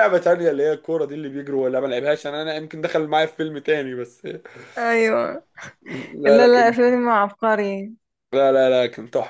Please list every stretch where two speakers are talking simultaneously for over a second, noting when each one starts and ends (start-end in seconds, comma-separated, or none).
none